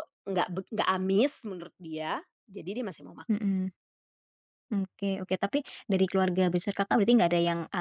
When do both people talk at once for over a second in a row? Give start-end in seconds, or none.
none